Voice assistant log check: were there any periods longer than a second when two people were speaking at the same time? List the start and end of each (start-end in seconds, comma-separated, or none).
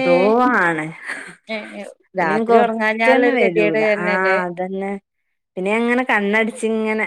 2.2-4.4